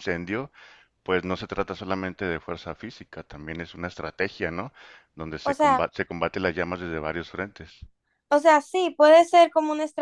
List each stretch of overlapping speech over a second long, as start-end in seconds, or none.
none